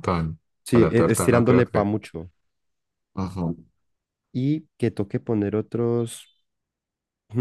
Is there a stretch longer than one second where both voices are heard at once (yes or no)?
yes